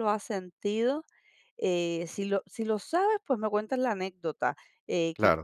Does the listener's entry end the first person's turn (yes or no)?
no